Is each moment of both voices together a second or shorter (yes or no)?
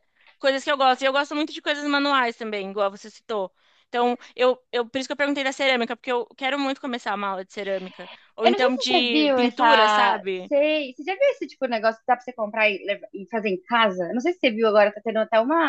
no